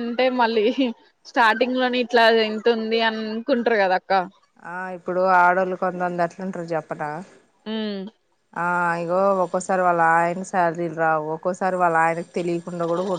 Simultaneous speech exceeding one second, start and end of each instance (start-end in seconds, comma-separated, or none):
none